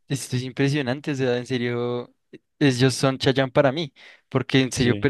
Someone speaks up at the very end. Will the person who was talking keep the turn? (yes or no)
yes